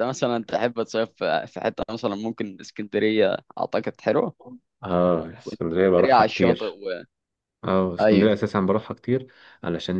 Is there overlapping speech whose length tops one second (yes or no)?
yes